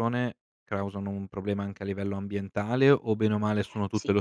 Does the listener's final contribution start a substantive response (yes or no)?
yes